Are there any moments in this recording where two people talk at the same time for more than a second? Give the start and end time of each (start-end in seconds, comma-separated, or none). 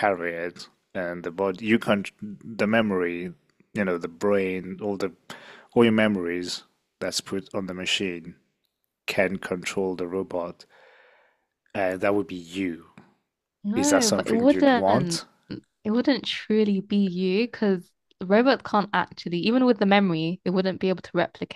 13.7-15.2